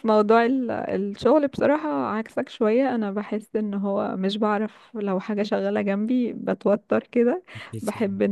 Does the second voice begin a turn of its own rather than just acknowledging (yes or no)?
no